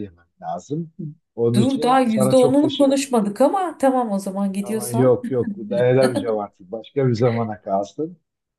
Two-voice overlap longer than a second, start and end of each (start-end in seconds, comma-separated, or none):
1.6-3.0